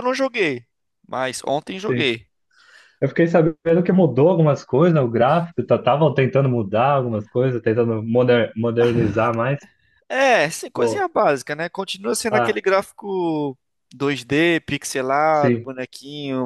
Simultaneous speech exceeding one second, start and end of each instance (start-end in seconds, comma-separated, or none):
none